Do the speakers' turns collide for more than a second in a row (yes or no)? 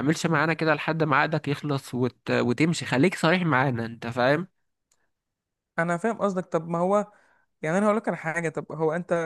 no